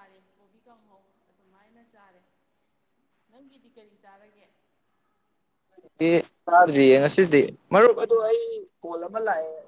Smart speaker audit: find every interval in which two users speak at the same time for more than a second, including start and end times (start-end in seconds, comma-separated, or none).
none